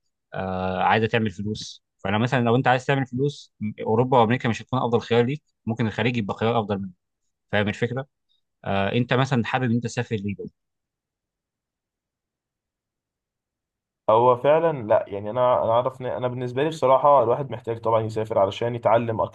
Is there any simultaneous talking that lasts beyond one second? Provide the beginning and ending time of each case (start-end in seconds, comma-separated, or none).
none